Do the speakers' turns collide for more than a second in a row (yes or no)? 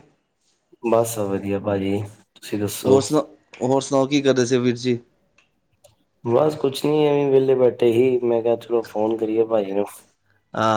no